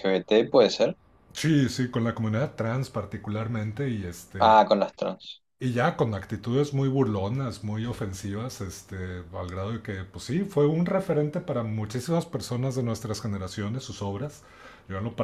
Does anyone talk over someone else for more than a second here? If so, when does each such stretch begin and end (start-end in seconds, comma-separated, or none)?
none